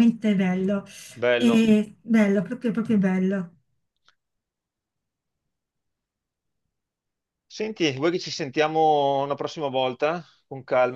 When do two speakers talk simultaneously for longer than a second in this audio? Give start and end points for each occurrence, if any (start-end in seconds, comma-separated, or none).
none